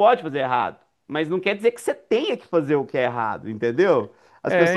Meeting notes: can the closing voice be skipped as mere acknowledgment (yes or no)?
yes